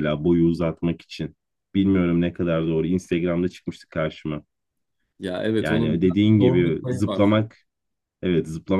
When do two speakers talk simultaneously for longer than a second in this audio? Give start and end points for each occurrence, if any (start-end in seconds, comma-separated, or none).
5.6-7.2